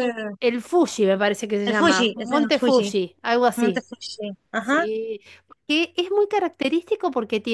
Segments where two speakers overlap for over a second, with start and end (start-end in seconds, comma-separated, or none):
1.6-2.9